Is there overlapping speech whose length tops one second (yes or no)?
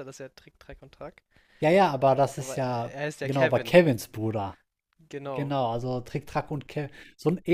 yes